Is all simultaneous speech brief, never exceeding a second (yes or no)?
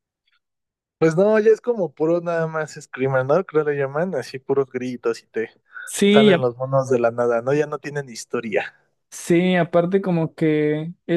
yes